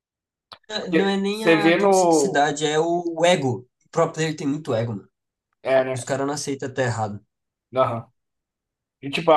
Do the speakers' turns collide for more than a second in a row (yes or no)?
yes